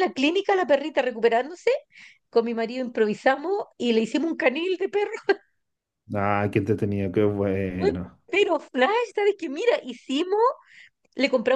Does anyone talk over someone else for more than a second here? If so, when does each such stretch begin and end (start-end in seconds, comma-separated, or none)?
none